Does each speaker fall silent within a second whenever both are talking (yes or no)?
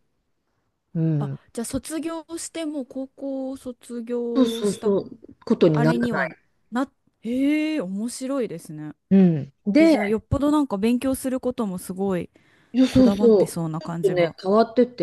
no